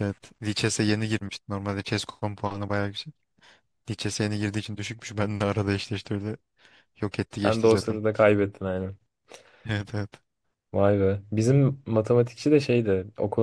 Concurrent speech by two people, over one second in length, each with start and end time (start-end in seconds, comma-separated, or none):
none